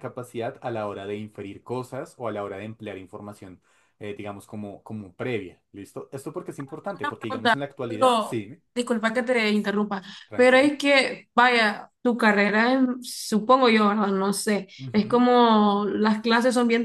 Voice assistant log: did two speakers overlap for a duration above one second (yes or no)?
yes